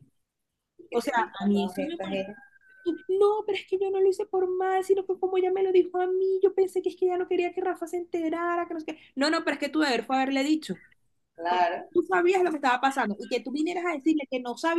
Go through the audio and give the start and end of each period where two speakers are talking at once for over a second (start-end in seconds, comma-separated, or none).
0.9-2.3